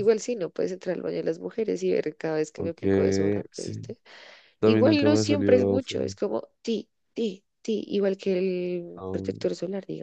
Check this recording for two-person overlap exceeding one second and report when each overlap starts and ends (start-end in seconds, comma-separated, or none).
4.6-6.2